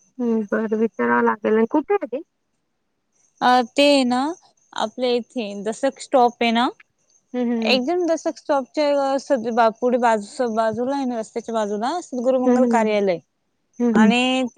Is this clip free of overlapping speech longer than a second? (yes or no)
yes